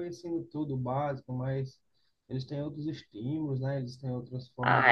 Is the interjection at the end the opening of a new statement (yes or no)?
yes